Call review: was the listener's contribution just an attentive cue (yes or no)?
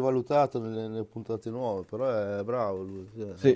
no